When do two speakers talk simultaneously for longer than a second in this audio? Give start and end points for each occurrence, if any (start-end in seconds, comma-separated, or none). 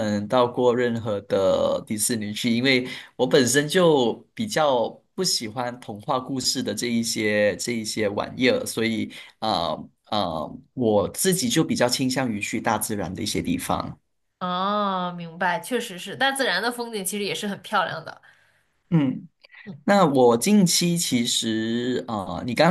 none